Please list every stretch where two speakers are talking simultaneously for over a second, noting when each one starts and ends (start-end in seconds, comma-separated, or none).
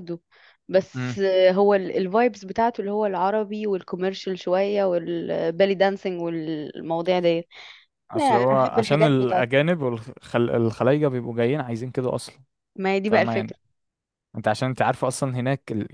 8.2-9.5